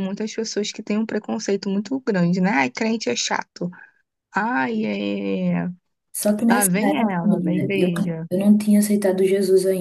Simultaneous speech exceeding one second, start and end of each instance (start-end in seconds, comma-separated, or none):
6.5-7.9